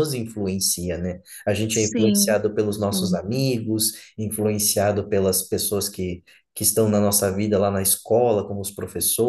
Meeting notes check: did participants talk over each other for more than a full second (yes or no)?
yes